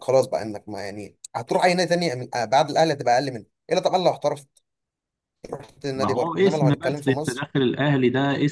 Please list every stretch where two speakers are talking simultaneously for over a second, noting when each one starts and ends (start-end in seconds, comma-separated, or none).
6.0-7.4